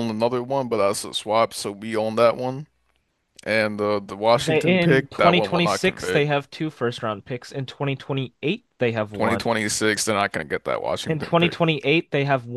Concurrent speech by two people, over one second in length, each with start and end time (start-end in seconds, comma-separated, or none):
4.4-6.2